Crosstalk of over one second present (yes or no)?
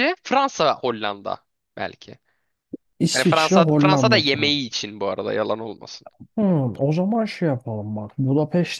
yes